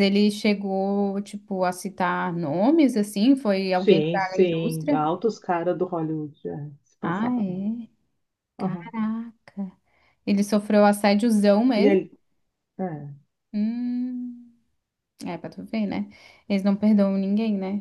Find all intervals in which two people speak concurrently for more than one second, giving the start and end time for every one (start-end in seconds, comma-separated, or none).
3.7-5.0